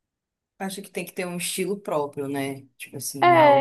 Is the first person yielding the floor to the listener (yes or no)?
yes